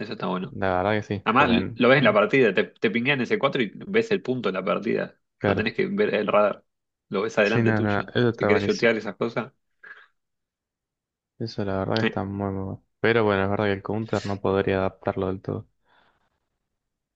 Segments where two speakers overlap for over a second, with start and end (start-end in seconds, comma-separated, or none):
7.4-8.9